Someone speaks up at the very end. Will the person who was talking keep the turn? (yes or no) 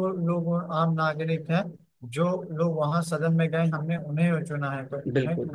yes